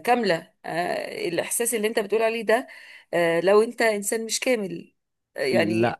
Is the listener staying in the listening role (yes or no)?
yes